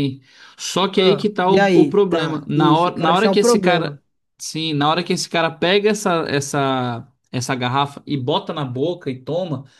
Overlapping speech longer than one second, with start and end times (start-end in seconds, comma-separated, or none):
0.9-4.0